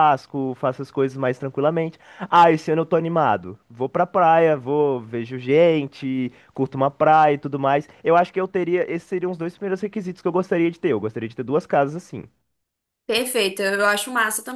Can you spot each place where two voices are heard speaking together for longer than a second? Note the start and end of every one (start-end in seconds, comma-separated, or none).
none